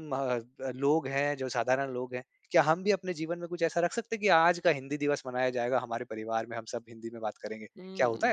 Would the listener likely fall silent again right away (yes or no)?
no